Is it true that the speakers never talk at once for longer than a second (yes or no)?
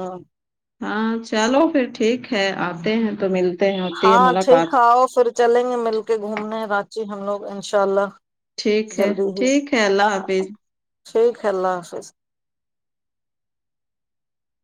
yes